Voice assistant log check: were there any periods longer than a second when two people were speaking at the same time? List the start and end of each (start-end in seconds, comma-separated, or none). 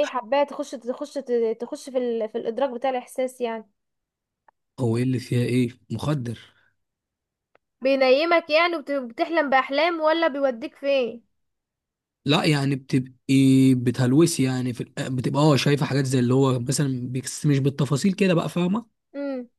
none